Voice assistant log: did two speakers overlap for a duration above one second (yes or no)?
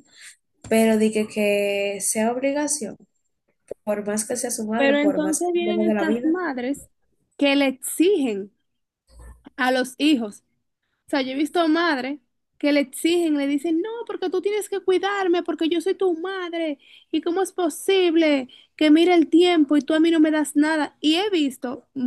yes